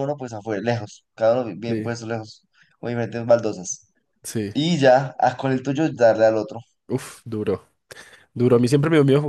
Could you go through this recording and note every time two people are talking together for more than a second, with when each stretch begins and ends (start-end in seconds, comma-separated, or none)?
none